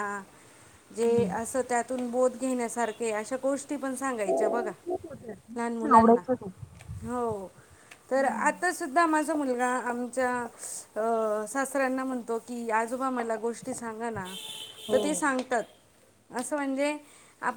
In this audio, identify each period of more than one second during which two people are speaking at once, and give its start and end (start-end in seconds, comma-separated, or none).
none